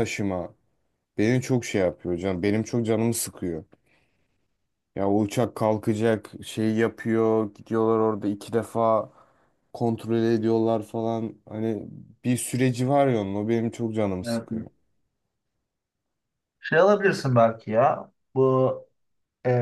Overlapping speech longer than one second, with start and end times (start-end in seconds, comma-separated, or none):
none